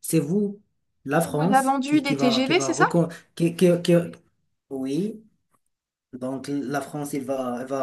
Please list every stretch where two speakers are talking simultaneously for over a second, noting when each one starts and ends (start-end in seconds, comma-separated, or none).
1.2-2.8